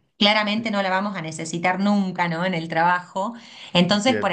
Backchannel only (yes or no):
yes